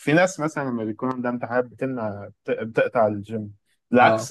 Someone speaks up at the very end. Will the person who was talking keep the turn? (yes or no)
yes